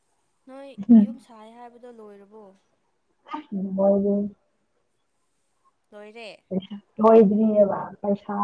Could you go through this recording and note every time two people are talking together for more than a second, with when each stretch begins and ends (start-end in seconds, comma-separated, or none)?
none